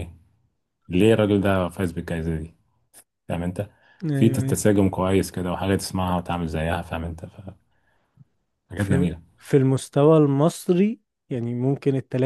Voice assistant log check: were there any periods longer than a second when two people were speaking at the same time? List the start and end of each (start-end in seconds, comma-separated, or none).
none